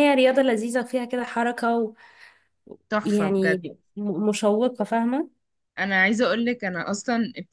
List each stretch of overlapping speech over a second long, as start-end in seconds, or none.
none